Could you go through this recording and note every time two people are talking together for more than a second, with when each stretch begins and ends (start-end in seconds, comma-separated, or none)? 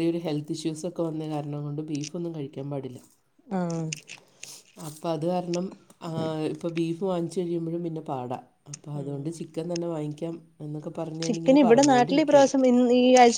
11.2-12.6